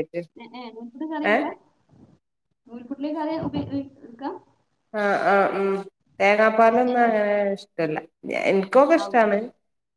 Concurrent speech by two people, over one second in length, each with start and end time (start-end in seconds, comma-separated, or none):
none